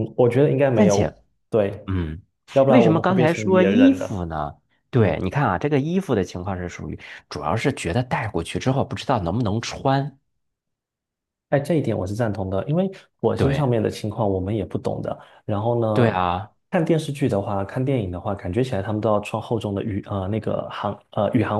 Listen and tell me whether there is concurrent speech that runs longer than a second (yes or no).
yes